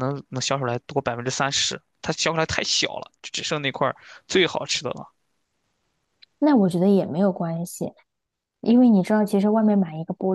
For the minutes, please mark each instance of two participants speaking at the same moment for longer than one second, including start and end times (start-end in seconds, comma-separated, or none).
none